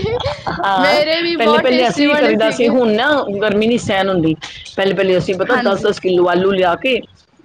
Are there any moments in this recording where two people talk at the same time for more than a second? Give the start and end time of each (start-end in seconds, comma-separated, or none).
0.8-2.7